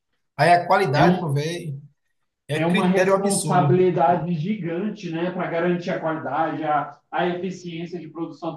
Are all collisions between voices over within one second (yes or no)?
no